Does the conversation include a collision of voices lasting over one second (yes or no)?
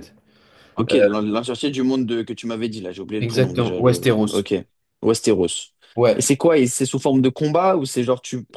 yes